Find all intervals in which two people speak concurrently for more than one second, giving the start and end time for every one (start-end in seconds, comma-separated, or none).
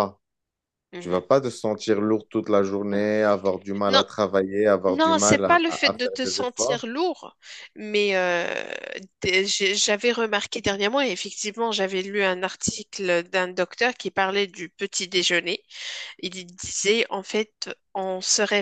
4.9-6.9